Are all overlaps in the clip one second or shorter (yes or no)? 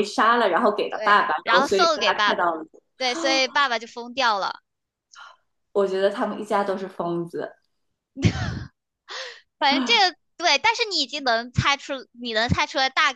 no